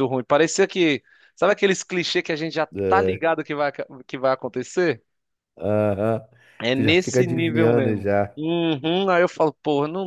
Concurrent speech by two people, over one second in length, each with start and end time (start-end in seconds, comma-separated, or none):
6.7-8.4